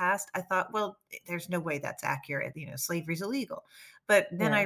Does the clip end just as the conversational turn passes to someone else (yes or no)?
no